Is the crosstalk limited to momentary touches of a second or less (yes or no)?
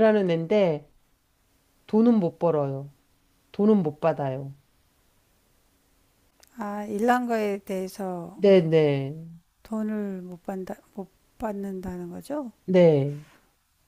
yes